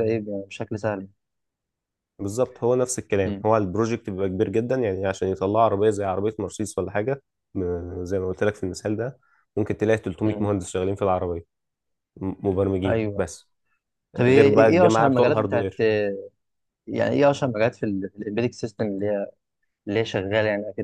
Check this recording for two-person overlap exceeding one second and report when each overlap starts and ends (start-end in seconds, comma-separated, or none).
14.2-15.7